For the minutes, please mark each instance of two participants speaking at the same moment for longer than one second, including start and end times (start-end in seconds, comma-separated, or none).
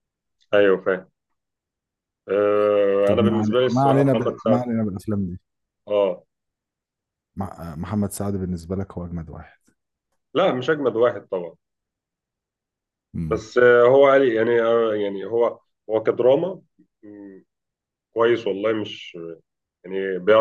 3.0-4.7